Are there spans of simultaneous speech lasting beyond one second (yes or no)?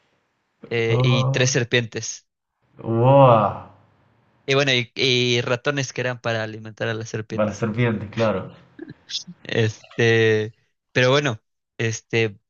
no